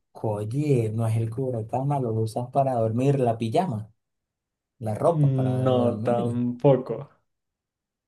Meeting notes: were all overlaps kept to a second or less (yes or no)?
no